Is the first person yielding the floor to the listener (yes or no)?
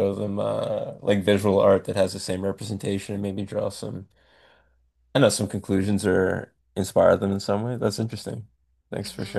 yes